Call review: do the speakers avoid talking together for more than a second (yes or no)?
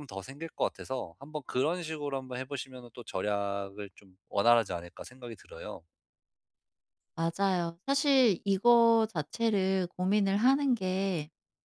yes